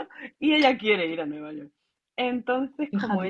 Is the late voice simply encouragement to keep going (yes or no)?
yes